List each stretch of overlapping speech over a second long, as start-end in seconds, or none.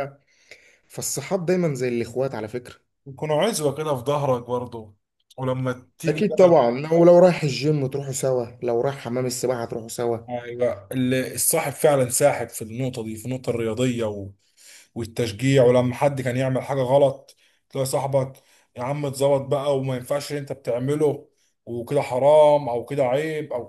none